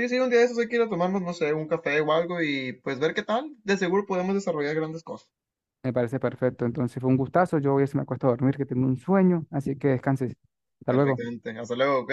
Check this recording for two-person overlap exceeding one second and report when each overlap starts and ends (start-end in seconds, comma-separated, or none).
none